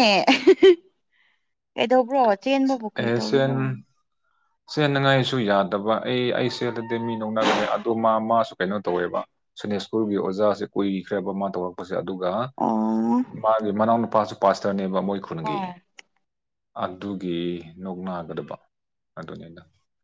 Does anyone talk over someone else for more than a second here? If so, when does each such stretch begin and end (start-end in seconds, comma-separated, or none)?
none